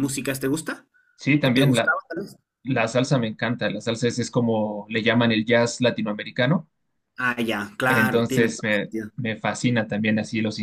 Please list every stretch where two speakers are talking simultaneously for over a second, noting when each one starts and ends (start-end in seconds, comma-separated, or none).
7.9-9.1